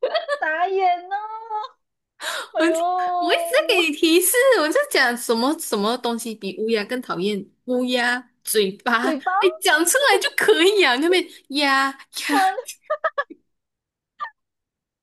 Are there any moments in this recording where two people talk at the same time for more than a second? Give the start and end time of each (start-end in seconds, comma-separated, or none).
none